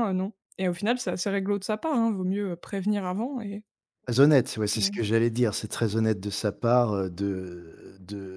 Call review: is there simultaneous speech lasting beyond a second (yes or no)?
no